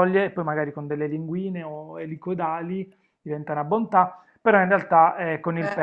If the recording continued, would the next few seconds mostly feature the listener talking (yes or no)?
no